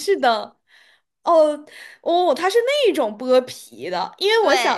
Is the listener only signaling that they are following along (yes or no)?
yes